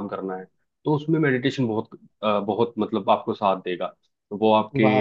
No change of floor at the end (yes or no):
no